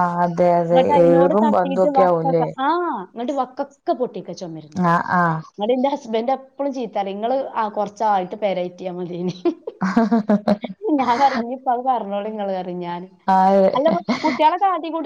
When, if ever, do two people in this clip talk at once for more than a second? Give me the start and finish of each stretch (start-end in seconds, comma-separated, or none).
0.7-2.4